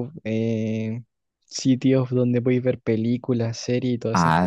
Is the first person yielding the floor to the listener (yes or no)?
yes